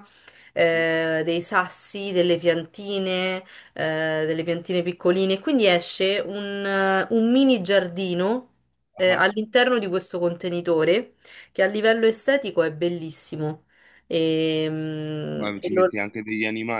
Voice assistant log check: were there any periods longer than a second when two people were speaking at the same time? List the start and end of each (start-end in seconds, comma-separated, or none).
none